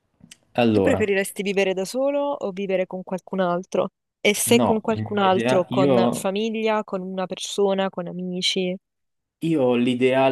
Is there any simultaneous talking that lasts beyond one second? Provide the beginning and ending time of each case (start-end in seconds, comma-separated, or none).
4.5-6.3